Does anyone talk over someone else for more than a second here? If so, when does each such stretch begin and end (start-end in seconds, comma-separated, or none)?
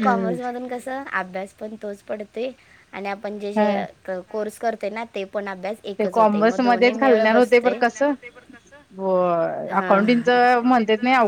6.0-7.7